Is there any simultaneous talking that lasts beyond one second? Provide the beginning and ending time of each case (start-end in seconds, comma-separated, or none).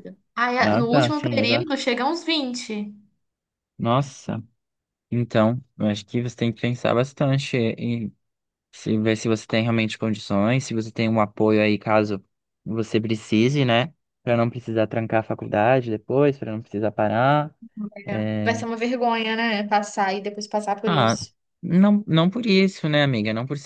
0.6-1.8